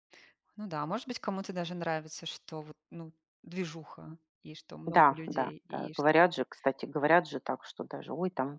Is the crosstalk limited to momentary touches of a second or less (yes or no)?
no